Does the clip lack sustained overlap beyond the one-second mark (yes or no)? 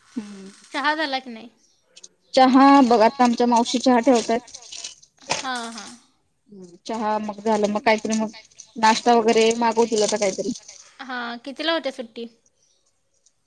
yes